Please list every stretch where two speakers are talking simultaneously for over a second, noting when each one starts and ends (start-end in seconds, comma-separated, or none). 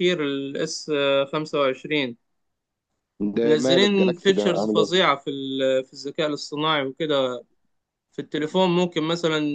3.4-5.1